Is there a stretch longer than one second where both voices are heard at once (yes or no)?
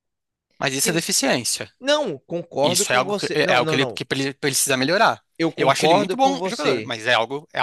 yes